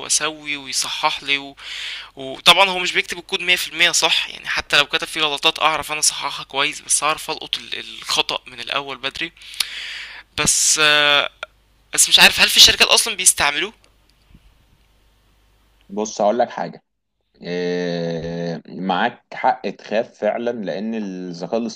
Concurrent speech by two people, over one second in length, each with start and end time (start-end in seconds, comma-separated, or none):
none